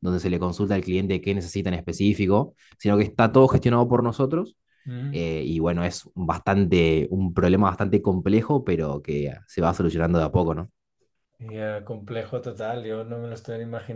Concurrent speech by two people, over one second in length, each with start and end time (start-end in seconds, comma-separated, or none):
none